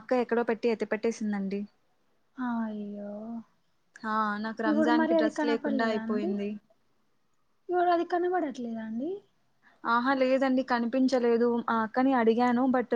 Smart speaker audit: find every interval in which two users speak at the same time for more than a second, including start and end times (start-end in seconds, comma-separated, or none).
4.7-6.3